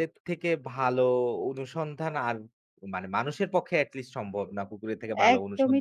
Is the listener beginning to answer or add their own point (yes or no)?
yes